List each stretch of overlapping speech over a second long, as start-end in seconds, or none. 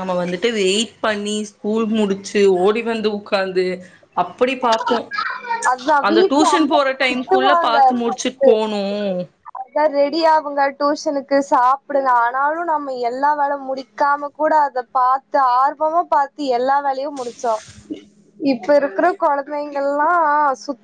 6.1-8.5